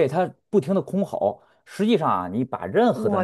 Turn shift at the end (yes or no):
no